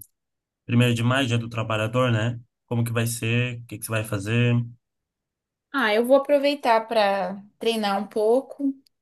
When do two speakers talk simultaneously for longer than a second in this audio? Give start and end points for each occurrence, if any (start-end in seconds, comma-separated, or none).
none